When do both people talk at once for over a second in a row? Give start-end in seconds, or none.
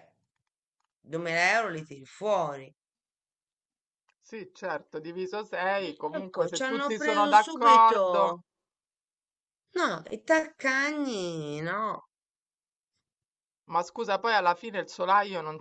6.2-8.4